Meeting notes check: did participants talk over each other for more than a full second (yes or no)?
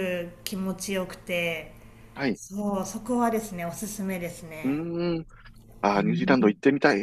no